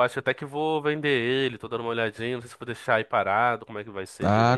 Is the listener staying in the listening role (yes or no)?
no